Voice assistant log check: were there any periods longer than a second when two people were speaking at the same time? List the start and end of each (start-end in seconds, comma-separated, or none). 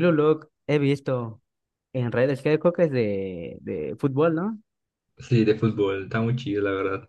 none